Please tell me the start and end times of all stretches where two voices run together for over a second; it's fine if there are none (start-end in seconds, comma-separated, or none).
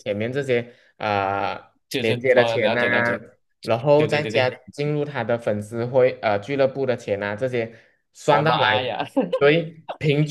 2.0-3.2